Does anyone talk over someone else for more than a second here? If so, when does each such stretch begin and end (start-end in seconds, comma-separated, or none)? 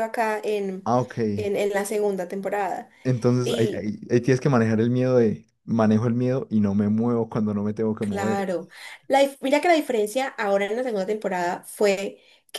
none